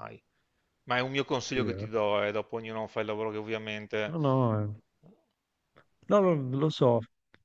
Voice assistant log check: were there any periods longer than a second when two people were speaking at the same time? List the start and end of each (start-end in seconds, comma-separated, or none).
none